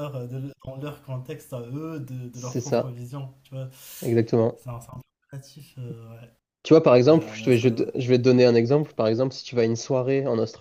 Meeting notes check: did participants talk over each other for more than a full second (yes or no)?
no